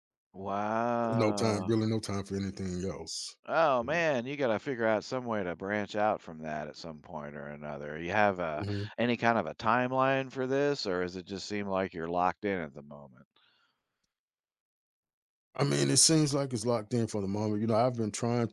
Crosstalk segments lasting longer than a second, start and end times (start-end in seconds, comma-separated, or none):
none